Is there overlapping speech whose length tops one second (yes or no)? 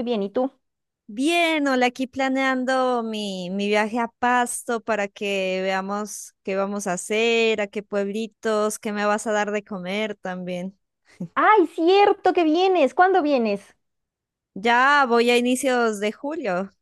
no